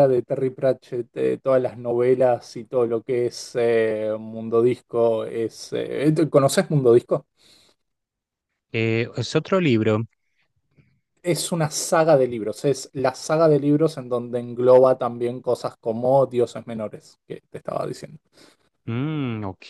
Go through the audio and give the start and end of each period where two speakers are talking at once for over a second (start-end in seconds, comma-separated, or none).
none